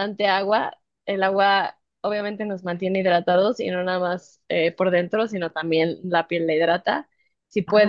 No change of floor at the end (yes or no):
yes